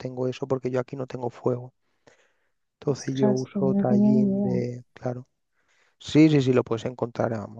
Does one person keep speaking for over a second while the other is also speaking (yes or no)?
yes